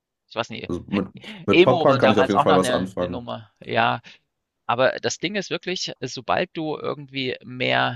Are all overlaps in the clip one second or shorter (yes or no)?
no